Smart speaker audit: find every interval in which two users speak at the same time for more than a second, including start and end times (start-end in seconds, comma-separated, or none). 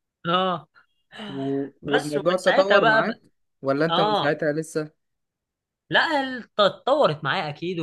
1.8-3.2